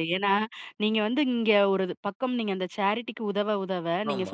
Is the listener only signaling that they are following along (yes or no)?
yes